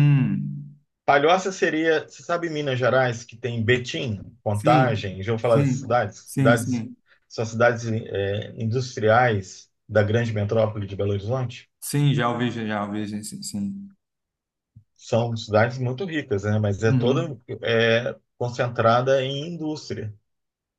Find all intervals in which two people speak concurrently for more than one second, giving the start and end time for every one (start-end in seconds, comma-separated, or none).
4.5-6.9